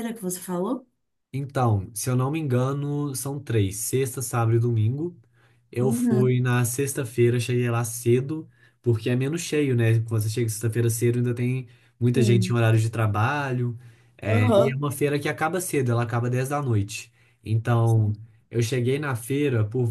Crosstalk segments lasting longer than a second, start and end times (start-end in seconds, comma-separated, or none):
none